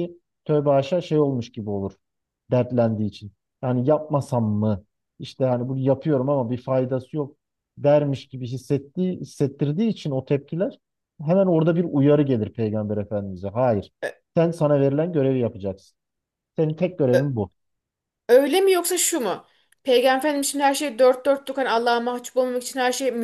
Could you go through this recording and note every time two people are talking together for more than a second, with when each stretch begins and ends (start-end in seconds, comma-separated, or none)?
none